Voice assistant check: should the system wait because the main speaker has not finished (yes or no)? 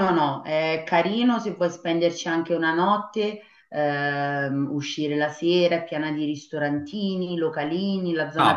no